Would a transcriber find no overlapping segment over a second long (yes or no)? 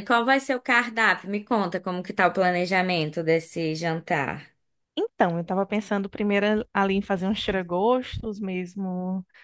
yes